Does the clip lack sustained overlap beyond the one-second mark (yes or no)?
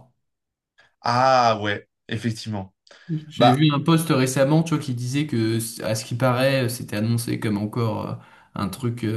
yes